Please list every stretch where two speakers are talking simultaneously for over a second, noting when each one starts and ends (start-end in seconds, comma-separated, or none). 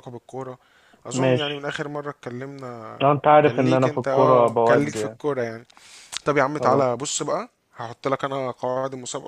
3.4-5.2